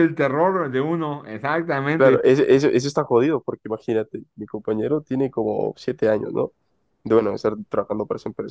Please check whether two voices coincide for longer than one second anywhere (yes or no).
no